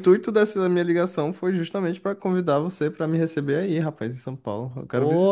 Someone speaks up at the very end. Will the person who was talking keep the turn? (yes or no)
no